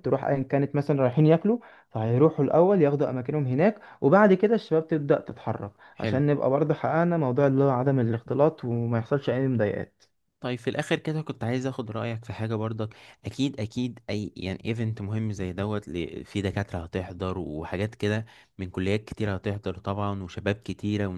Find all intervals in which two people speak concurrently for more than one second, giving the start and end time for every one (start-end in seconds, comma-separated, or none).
none